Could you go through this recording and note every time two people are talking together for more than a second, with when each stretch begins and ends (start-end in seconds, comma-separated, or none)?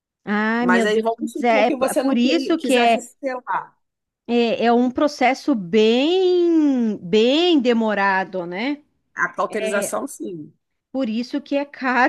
0.6-3.0